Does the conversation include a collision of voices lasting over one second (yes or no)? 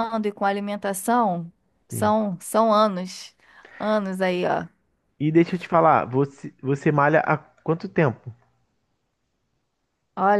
no